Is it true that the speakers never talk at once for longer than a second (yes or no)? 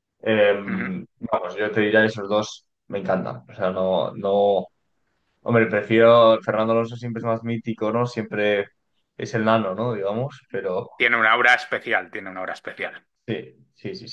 yes